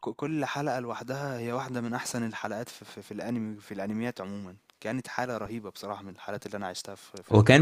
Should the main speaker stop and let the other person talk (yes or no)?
yes